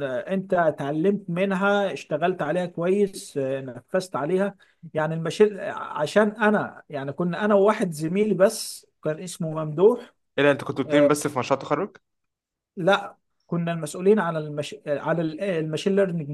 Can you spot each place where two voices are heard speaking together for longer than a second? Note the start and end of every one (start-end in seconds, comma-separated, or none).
none